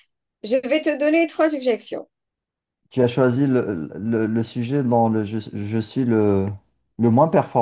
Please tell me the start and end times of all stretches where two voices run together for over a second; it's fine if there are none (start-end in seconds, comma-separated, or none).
none